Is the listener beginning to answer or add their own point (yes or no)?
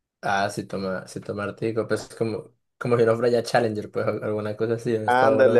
yes